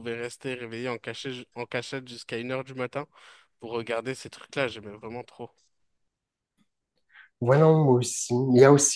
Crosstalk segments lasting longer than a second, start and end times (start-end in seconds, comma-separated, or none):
none